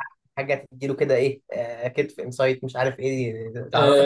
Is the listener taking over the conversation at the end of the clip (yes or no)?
yes